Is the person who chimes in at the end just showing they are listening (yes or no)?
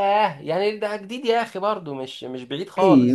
no